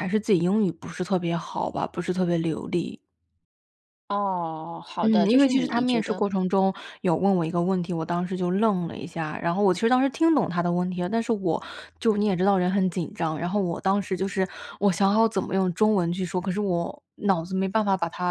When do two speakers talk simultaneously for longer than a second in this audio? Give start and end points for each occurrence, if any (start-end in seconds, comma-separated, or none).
5.0-6.2